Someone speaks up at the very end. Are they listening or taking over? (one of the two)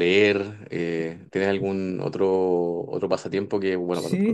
taking over